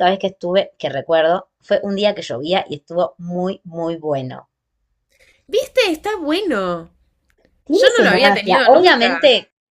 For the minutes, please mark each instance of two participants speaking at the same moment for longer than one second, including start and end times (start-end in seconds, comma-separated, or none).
7.7-9.2